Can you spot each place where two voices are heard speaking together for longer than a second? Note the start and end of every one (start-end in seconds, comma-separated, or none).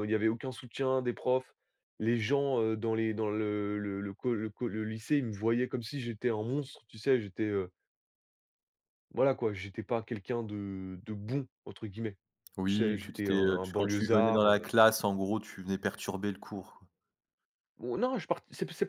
12.7-14.7